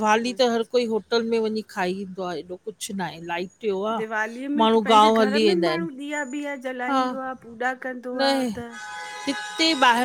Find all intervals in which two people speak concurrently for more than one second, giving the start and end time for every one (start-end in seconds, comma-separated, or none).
none